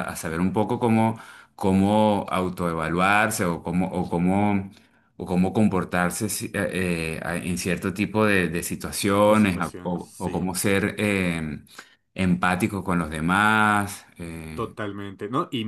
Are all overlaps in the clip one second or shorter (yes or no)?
no